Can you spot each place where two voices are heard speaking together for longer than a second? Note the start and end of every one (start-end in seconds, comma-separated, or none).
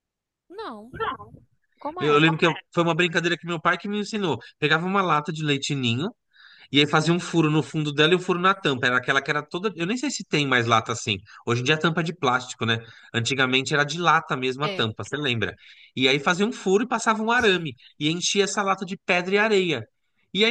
none